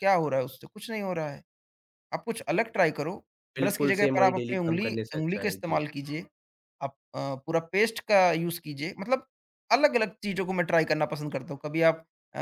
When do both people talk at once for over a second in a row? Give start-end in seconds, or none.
3.6-5.8